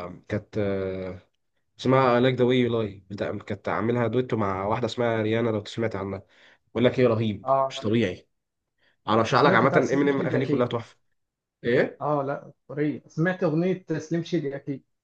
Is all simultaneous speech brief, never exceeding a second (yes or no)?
no